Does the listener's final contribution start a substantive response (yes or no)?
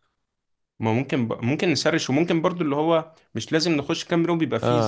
no